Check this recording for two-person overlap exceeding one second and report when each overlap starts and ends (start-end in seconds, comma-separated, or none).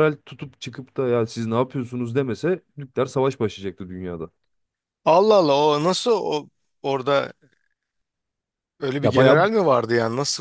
none